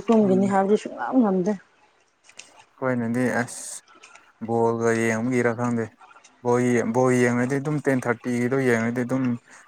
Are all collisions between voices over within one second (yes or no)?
yes